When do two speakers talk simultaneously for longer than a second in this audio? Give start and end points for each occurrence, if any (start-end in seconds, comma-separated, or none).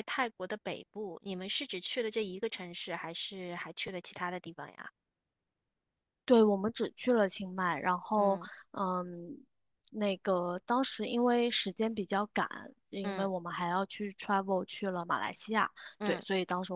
none